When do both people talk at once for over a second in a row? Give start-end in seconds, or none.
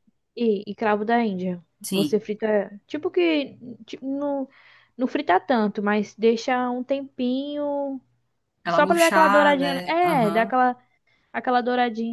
8.7-10.6